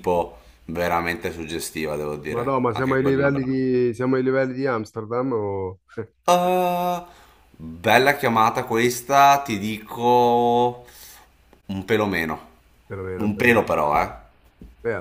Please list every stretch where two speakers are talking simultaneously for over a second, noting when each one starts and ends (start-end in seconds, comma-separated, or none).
2.3-3.6